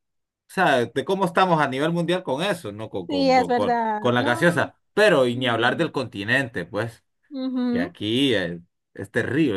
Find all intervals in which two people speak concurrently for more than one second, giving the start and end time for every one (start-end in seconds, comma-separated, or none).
3.1-4.7